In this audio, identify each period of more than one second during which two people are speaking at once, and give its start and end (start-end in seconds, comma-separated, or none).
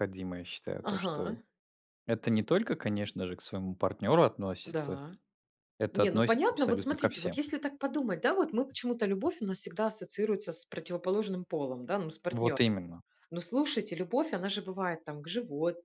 5.9-7.4